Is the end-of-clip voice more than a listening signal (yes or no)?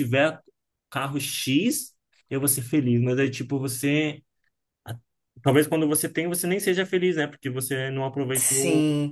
yes